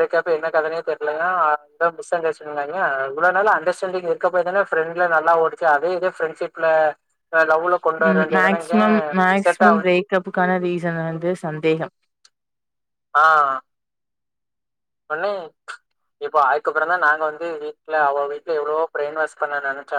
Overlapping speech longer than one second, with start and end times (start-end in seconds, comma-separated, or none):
none